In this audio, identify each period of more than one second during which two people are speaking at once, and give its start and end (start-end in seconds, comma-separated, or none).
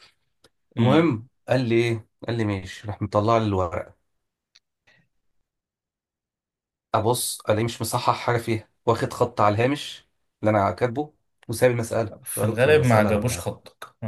12.2-13.4